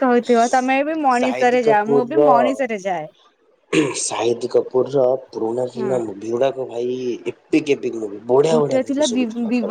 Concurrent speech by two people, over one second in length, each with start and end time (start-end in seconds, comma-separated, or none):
1.2-2.8